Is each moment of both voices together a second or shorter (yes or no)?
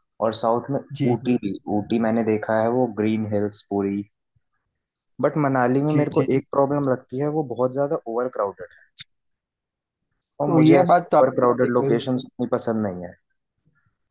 no